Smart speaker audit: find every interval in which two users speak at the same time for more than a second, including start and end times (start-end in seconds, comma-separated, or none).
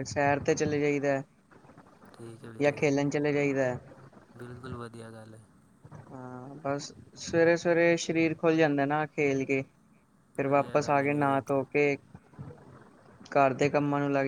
10.4-11.6